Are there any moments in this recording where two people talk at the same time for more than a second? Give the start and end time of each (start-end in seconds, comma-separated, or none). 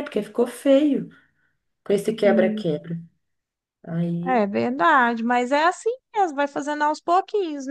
none